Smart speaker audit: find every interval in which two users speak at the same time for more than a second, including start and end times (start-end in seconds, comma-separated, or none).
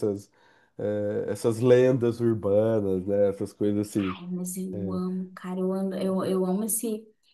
none